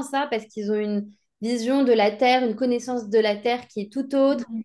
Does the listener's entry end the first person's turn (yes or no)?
no